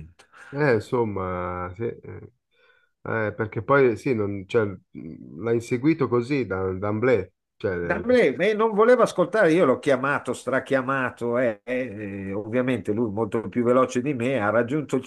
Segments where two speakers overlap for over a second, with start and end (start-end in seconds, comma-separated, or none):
none